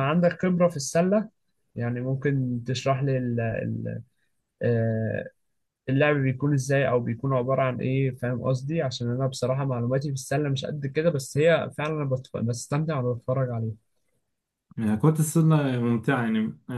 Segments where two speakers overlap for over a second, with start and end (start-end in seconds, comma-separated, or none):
none